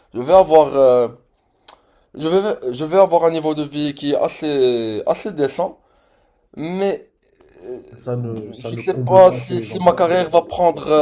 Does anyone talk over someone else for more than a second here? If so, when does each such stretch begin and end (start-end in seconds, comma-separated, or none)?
8.6-10.2